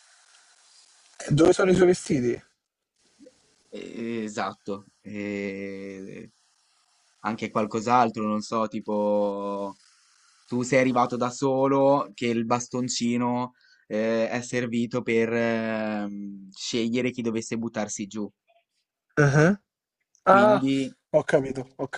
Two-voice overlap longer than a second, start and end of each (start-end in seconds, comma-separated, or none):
none